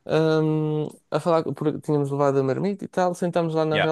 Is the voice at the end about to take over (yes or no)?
no